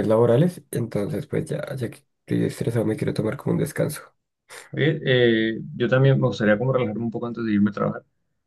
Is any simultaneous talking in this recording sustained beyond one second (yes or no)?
no